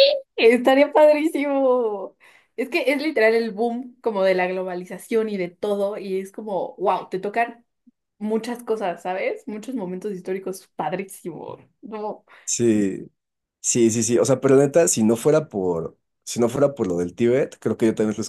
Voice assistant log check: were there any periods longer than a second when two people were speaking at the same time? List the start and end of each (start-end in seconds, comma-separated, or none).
none